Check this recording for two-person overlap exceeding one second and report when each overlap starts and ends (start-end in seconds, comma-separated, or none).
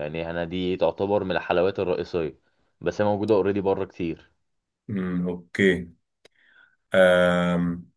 none